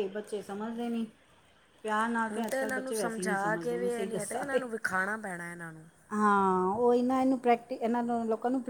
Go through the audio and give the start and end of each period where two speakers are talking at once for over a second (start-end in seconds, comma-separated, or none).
2.3-4.6